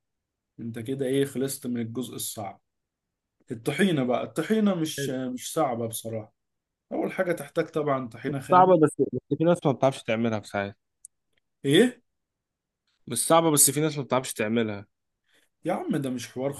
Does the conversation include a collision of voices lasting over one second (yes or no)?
no